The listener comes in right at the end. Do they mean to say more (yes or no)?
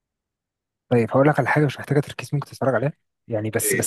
no